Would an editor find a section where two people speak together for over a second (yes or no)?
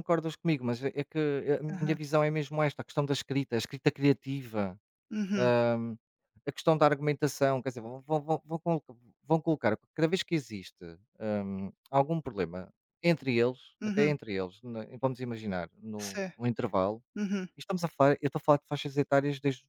no